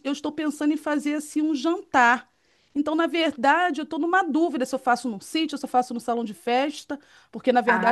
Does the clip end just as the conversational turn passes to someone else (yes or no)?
no